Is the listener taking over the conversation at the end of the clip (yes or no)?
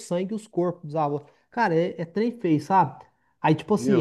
no